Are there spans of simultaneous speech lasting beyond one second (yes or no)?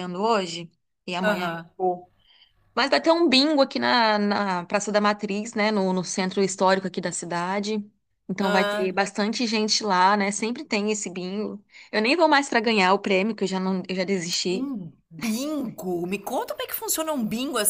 no